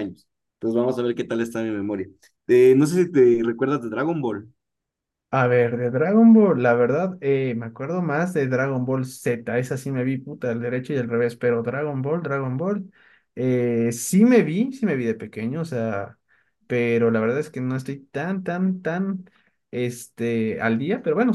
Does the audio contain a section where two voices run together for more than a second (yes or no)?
no